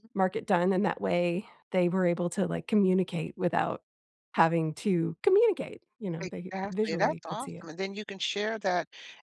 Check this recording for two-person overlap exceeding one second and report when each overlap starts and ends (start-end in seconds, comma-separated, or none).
6.2-7.7